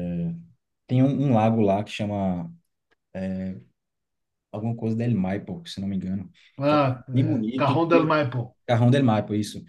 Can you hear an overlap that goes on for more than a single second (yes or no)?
yes